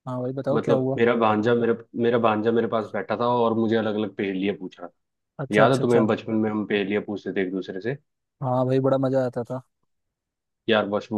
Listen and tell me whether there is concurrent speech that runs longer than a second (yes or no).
no